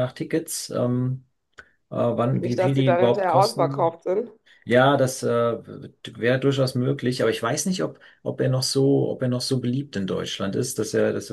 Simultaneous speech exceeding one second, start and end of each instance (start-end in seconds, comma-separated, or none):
2.4-4.0